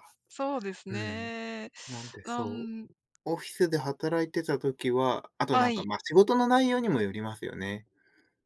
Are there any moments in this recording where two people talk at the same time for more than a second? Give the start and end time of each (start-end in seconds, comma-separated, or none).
none